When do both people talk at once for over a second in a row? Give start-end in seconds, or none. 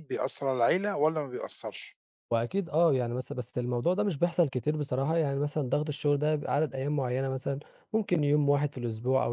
none